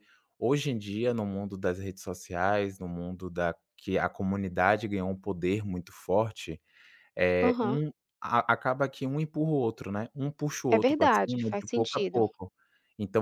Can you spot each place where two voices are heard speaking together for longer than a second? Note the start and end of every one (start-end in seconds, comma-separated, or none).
10.7-12.3